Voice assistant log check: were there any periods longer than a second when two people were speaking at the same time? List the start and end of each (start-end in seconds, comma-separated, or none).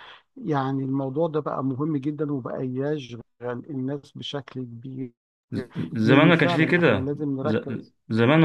6.0-7.9